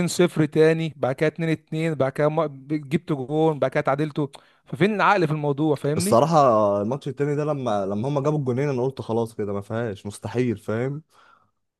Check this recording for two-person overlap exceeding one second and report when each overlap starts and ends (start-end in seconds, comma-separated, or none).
none